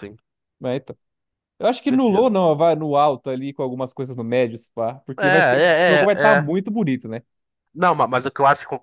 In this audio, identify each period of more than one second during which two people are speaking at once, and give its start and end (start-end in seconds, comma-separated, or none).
5.2-6.5